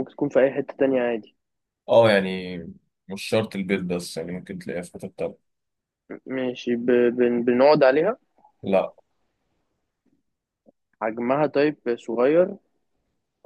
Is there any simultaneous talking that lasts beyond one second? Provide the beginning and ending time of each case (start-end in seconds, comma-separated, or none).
none